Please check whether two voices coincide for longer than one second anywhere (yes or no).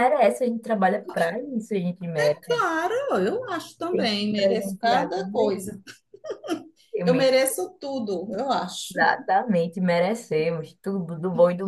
yes